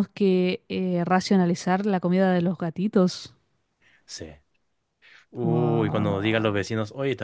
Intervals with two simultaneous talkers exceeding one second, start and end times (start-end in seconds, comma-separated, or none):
5.4-6.7